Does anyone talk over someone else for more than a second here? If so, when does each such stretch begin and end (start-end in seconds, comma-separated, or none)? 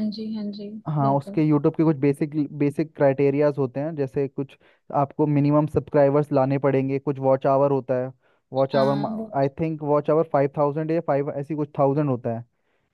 none